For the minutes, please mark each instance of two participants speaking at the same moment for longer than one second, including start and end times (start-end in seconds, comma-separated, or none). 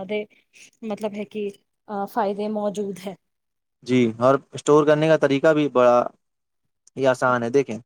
none